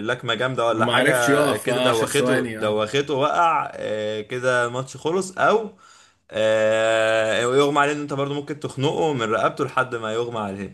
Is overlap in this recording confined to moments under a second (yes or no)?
no